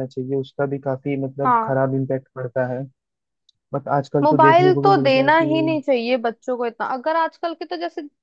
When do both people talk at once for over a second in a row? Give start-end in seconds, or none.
4.2-5.8